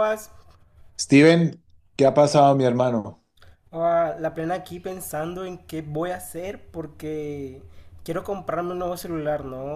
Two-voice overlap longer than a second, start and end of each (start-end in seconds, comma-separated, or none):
none